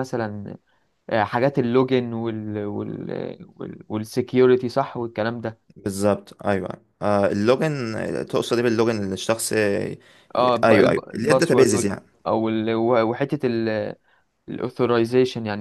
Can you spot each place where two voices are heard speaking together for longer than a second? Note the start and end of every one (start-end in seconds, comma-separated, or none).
10.6-12.0